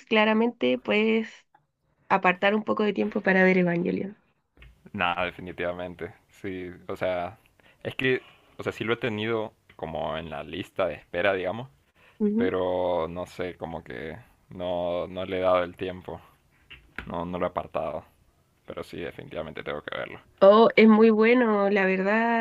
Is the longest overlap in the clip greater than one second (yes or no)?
no